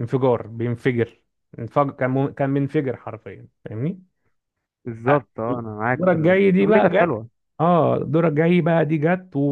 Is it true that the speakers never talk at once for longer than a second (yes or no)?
no